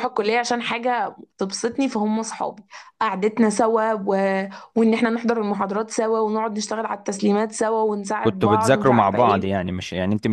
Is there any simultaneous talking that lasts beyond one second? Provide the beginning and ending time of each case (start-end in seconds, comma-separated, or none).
8.2-9.5